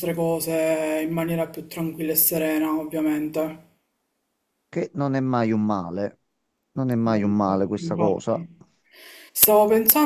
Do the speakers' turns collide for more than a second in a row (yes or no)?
yes